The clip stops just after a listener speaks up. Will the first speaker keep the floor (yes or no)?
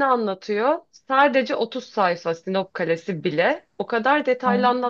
yes